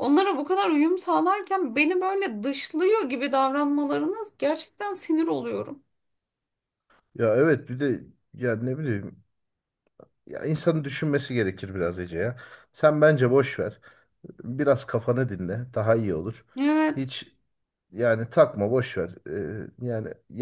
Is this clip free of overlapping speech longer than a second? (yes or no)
yes